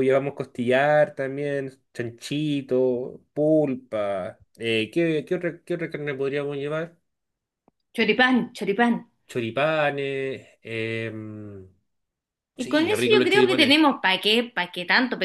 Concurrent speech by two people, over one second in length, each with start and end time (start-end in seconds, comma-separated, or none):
12.6-13.8